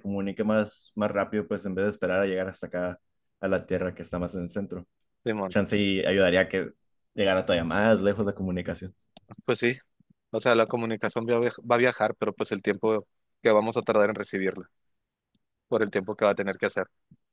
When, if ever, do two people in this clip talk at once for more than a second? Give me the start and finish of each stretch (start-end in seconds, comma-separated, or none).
none